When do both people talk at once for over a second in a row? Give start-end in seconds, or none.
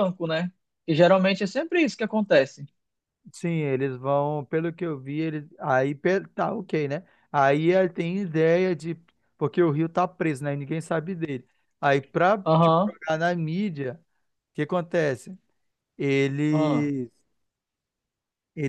none